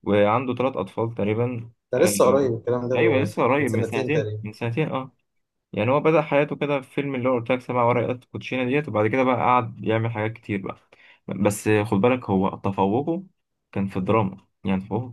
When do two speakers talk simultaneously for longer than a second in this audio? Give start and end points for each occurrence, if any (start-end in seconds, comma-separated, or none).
3.0-4.4